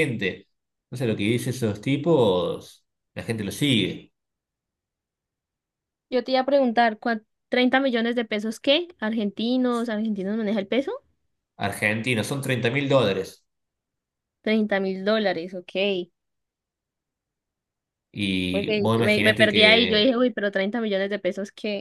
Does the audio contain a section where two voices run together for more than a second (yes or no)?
yes